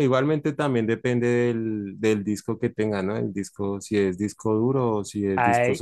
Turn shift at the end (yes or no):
yes